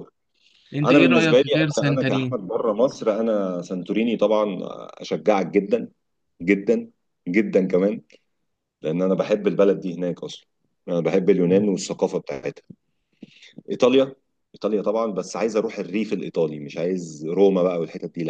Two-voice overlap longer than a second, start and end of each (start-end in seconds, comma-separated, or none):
0.8-2.4